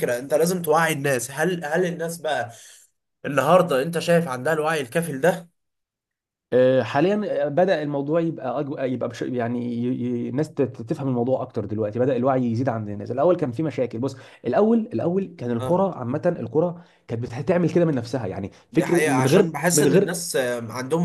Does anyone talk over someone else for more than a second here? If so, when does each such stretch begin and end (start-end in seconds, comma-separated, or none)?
18.7-20.2